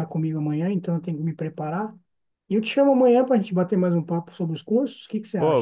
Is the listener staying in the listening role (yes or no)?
no